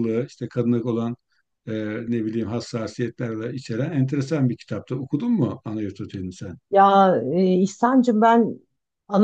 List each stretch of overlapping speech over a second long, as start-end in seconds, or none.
none